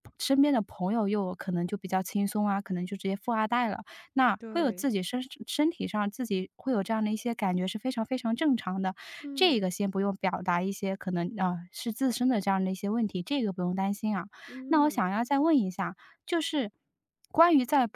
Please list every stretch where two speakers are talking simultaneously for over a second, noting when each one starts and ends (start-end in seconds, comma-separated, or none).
none